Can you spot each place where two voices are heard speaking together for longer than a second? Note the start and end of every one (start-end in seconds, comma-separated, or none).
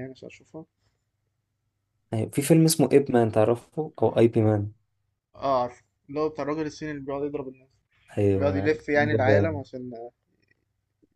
8.3-9.6